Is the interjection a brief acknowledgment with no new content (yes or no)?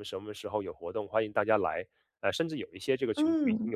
yes